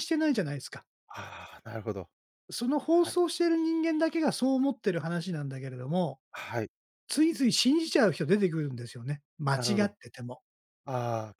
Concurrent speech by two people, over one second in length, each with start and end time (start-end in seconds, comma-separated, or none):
none